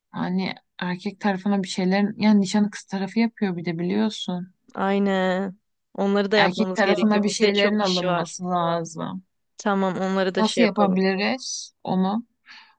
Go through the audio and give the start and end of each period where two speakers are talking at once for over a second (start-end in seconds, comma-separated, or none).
6.4-8.3